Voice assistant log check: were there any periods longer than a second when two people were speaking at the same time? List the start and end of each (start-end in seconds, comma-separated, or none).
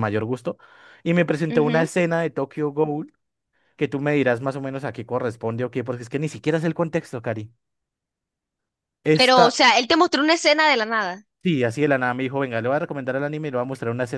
none